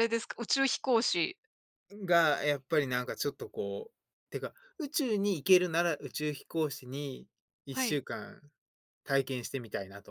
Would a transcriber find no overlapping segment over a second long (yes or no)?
yes